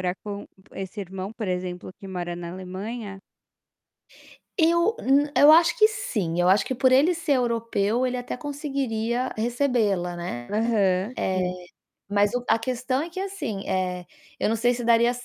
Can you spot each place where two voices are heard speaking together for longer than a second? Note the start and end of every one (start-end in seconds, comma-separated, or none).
none